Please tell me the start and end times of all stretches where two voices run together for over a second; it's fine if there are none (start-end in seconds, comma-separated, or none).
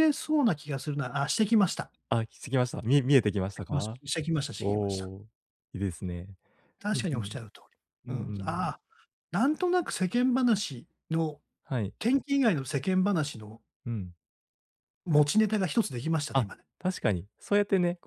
none